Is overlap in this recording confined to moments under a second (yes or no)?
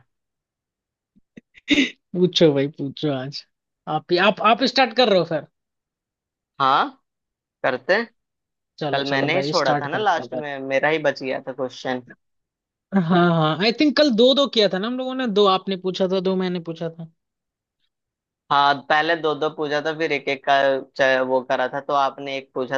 no